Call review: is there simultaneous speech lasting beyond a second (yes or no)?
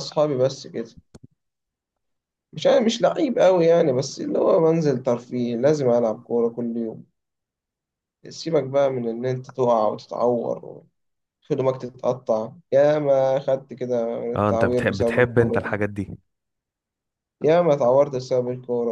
yes